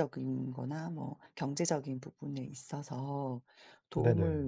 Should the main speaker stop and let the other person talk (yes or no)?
no